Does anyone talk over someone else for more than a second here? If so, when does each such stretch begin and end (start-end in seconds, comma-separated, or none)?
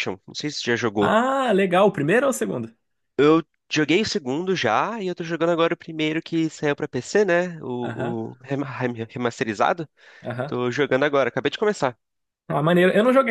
none